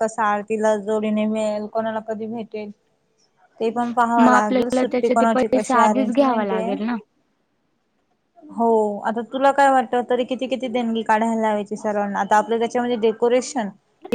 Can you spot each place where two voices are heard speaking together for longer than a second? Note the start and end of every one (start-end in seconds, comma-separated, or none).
4.2-6.7